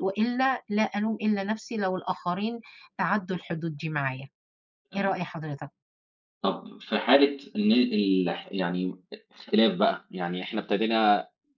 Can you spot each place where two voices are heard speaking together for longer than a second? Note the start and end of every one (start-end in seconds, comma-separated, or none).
none